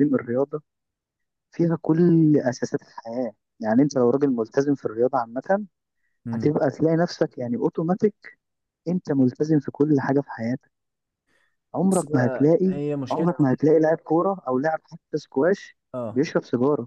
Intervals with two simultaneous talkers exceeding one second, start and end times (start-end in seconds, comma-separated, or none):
11.8-13.6